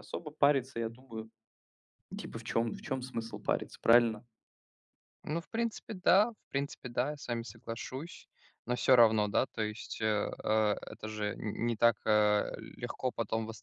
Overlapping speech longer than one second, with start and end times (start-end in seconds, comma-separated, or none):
none